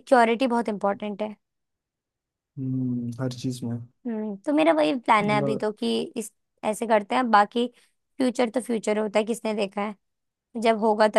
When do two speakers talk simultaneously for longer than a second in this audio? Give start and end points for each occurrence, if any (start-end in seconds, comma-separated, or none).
none